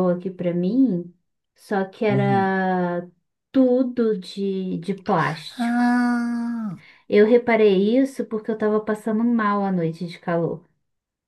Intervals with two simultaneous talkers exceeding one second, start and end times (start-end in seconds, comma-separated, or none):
none